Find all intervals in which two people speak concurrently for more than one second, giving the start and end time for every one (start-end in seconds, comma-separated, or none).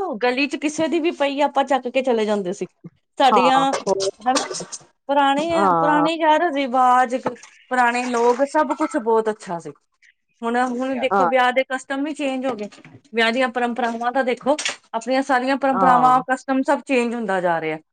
none